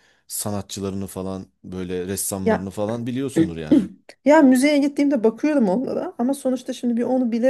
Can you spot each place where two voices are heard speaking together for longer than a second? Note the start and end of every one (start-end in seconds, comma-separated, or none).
none